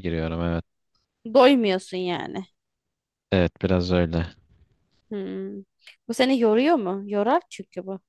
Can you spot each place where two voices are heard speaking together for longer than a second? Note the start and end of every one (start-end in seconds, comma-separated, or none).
none